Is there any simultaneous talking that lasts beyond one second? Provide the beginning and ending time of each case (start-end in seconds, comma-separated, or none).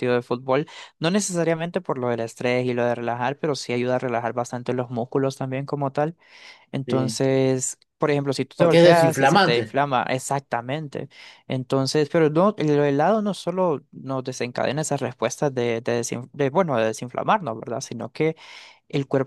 8.6-9.8